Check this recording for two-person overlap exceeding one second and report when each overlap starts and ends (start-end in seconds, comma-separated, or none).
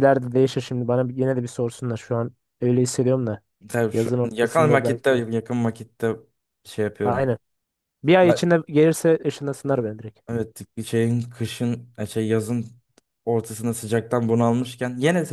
3.9-5.2